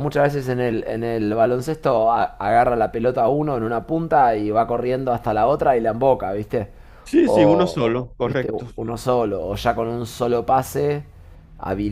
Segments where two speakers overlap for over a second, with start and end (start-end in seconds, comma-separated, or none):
7.2-8.7